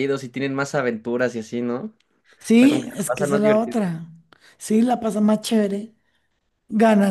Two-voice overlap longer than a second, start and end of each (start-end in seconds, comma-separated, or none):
2.5-3.9